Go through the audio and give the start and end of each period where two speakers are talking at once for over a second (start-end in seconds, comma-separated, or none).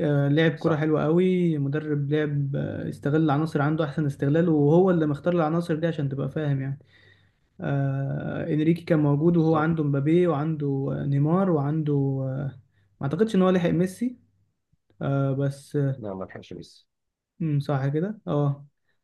none